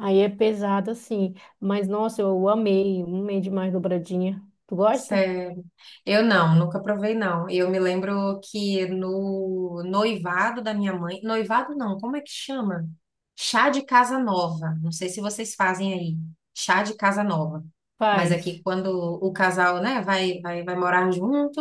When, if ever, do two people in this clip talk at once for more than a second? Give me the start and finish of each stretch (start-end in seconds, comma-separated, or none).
none